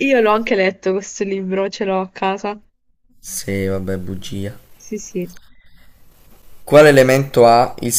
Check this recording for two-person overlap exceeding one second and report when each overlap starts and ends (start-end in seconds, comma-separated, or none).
none